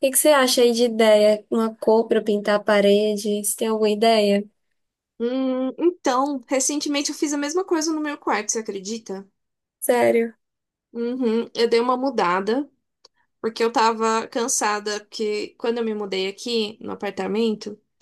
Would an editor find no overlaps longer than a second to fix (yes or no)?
yes